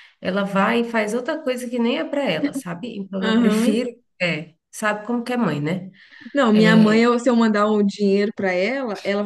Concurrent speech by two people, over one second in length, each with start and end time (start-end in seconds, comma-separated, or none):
none